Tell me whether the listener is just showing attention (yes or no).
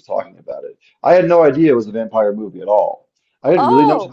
yes